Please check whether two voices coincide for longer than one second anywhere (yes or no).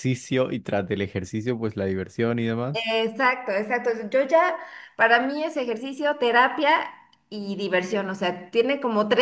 no